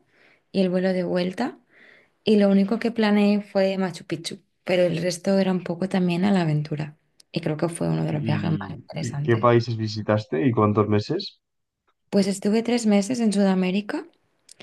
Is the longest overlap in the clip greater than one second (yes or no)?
yes